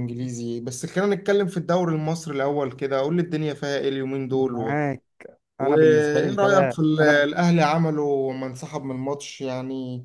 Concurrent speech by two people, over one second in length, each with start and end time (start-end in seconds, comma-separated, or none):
5.6-7.3